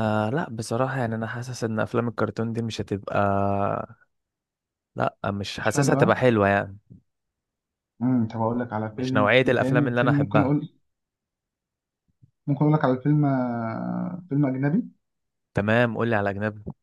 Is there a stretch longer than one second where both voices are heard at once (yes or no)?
yes